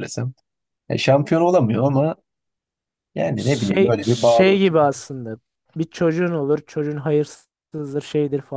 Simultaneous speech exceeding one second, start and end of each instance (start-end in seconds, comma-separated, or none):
3.4-4.6